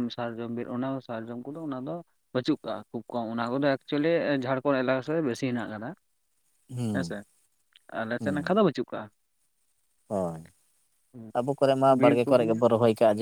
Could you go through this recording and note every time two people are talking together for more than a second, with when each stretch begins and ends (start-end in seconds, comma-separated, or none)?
none